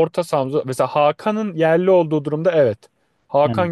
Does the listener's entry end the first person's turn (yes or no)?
no